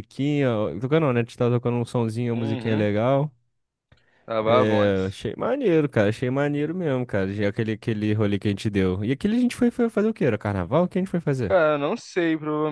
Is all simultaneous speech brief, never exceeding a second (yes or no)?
yes